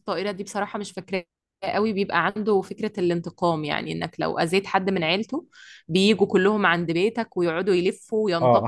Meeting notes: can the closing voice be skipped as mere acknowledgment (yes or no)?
no